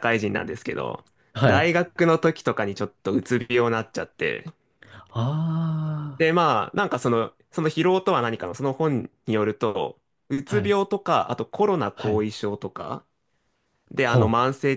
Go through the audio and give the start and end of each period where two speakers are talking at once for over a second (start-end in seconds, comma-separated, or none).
none